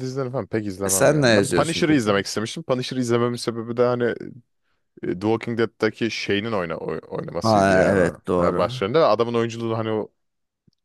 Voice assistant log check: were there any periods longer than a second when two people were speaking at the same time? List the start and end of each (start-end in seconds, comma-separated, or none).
0.8-2.2, 7.4-8.8